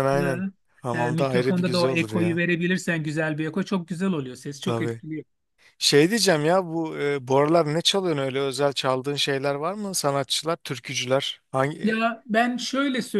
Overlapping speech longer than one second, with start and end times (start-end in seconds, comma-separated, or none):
0.9-2.4